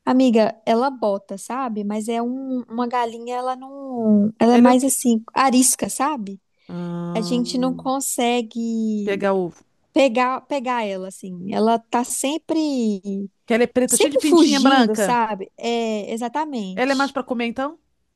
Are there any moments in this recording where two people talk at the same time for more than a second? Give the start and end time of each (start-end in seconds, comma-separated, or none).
13.8-15.2